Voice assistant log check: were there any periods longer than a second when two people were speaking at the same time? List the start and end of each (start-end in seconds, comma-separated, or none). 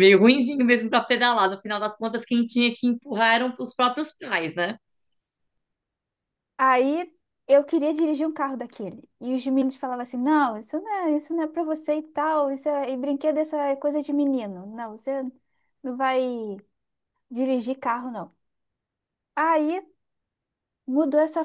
none